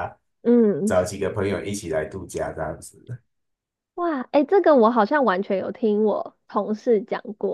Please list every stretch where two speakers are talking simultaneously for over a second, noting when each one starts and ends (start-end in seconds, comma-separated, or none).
none